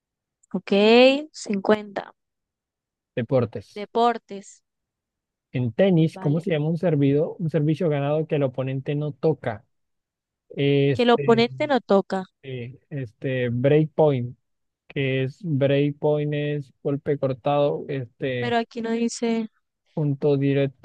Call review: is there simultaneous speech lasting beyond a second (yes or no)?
no